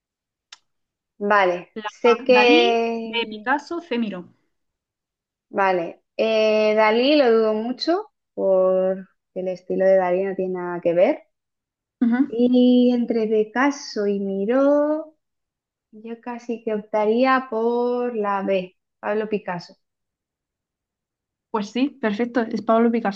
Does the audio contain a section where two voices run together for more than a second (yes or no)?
yes